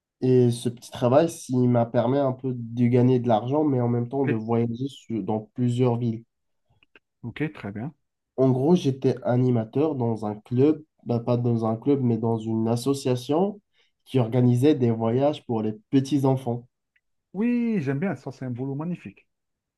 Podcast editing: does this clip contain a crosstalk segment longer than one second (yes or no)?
no